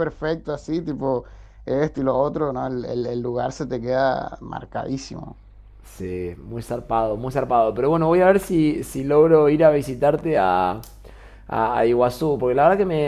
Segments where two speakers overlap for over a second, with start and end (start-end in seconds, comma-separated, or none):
none